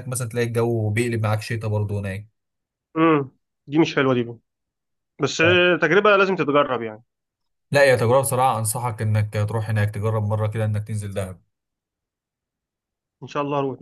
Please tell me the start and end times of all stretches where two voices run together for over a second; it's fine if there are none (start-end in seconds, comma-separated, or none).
none